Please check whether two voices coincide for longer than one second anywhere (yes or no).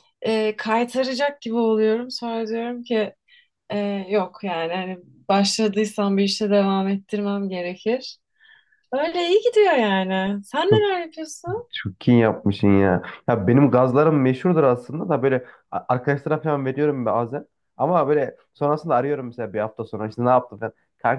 no